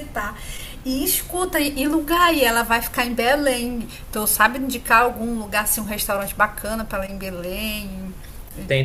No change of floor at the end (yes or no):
no